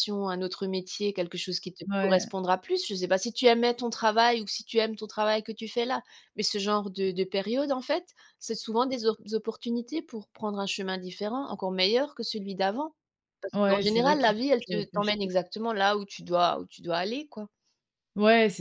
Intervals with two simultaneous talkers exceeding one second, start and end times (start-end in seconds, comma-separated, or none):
13.5-15.3